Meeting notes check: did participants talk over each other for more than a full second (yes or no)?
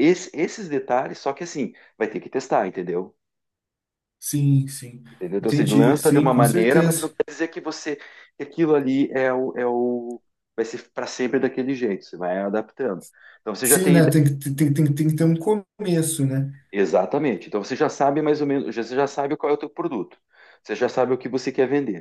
yes